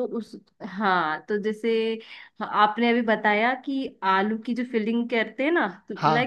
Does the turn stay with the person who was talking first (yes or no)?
yes